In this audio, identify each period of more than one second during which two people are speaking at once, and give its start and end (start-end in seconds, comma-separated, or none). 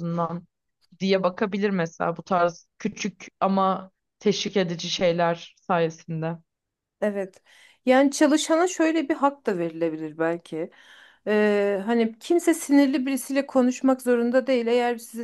none